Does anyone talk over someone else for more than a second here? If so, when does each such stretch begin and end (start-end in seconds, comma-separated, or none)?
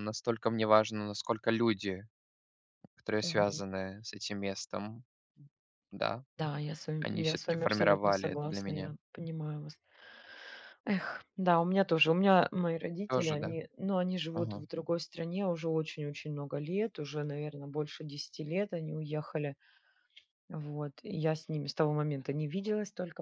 7.0-8.9